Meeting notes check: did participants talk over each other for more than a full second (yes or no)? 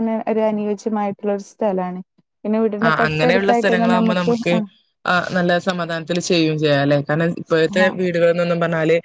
yes